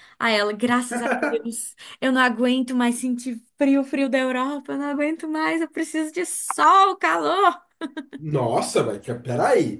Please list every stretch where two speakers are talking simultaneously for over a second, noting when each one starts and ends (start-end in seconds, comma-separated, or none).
none